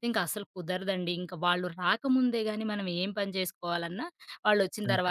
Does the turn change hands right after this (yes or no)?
no